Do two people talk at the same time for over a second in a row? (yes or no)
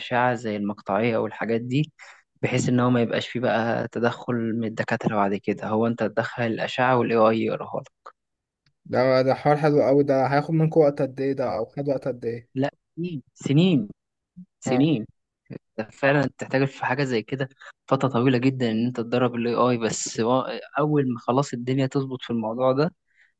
no